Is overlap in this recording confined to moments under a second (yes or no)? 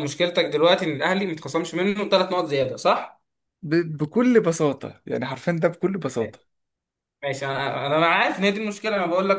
yes